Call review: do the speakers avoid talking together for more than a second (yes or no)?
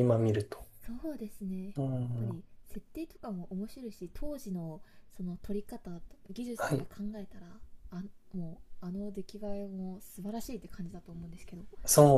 yes